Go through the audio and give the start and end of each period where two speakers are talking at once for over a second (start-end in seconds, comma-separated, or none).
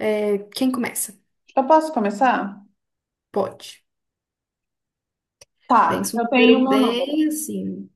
5.9-7.2